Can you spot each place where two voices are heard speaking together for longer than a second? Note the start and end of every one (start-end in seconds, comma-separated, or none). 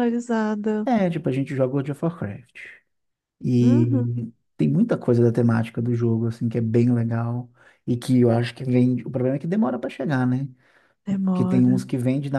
none